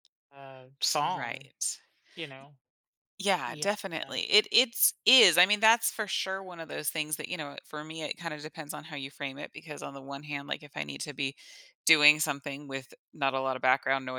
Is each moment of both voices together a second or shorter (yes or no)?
yes